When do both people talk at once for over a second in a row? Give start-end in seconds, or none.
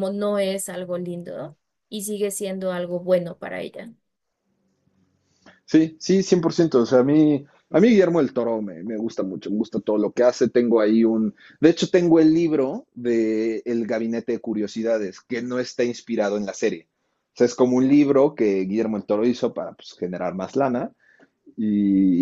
none